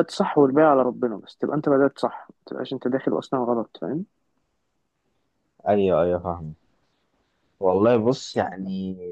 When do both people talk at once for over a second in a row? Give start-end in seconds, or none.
none